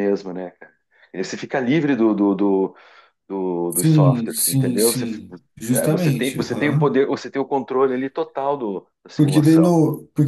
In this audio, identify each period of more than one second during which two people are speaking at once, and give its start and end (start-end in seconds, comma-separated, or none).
3.7-5.1, 5.7-7.0